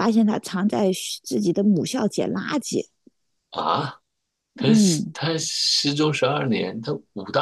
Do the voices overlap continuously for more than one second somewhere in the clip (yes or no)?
no